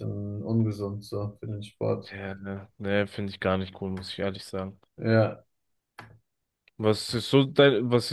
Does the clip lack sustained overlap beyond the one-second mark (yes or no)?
yes